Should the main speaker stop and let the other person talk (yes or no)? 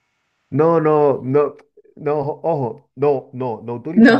no